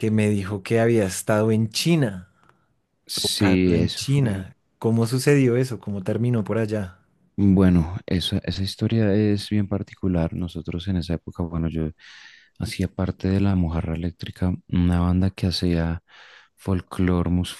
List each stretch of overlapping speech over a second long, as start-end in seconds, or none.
3.2-4.4